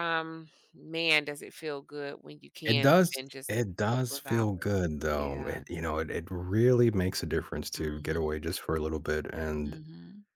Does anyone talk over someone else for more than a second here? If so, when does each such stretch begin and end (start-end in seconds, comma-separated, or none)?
2.7-4.5